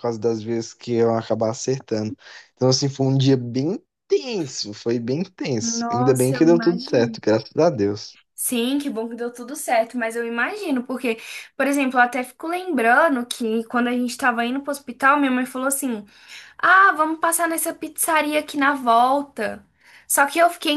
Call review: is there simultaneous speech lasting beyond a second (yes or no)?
yes